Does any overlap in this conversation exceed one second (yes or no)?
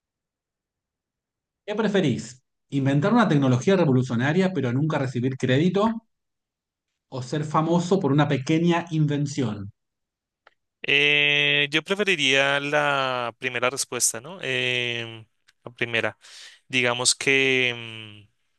no